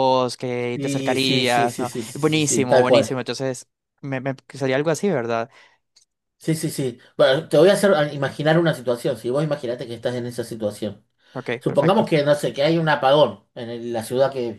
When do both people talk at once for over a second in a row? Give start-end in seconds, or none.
0.7-3.1